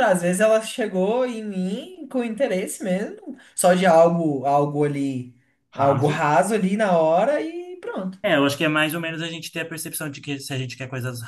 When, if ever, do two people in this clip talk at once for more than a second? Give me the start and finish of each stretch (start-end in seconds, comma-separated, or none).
none